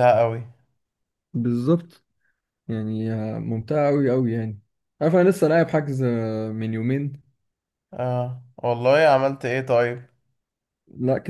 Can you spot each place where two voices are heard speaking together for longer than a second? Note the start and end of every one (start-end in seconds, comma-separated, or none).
none